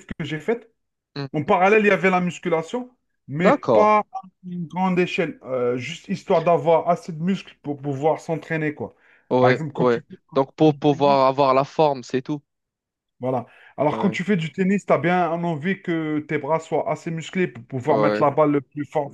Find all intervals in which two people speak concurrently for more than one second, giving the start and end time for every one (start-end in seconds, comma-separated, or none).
9.4-11.2